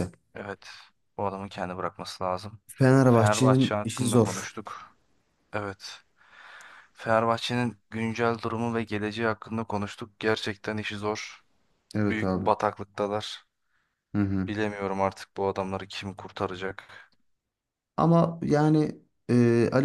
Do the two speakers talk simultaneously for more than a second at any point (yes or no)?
yes